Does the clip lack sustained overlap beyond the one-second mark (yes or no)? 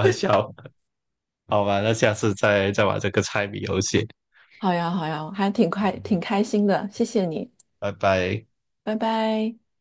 yes